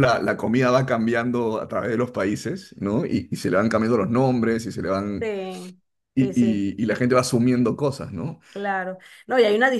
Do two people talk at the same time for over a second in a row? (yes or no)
no